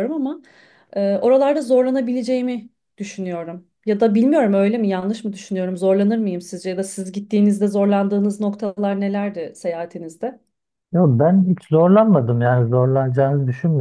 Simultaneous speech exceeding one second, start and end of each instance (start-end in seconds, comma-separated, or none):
none